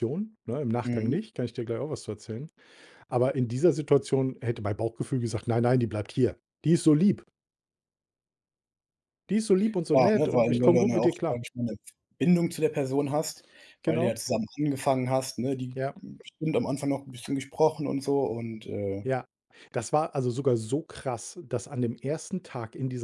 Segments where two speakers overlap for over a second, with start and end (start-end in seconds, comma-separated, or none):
9.9-11.4